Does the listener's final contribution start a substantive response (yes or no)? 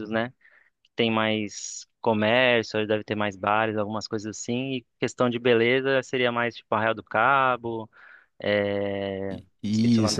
yes